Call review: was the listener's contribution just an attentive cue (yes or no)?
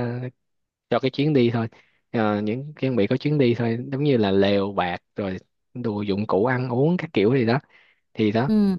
yes